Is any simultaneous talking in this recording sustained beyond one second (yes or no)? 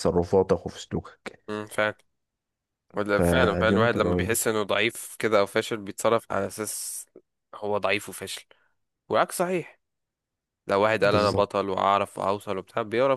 yes